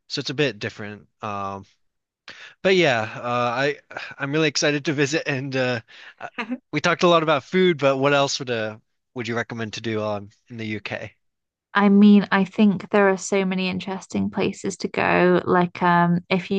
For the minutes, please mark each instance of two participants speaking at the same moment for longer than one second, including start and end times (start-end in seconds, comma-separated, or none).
none